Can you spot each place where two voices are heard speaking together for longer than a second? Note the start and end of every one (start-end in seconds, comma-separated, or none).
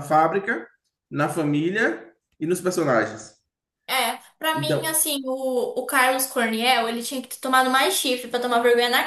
none